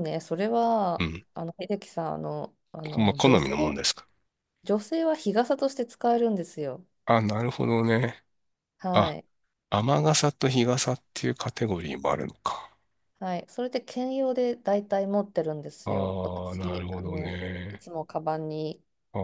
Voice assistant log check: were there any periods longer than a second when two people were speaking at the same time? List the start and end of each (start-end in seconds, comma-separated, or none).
15.8-17.9